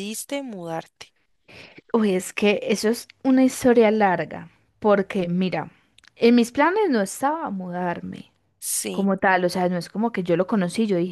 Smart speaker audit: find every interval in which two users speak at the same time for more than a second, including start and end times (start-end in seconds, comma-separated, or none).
none